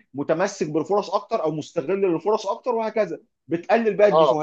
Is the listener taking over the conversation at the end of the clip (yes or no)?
no